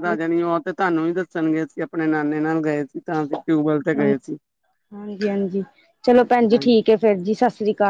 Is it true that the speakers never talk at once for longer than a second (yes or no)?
yes